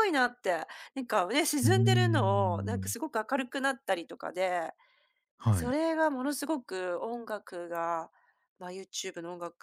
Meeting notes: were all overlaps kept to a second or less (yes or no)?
no